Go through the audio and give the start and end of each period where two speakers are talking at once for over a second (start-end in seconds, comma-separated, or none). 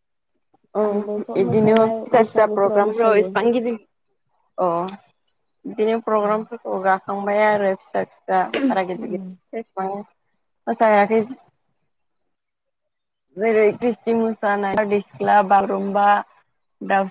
1.4-3.3